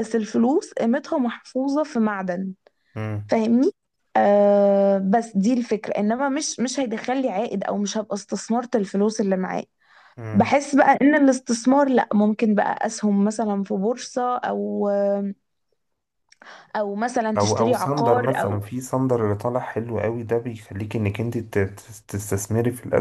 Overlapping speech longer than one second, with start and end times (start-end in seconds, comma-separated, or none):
17.4-18.6